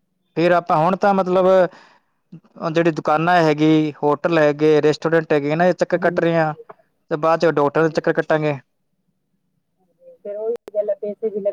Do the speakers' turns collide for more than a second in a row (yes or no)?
no